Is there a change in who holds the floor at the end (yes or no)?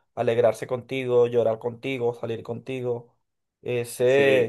yes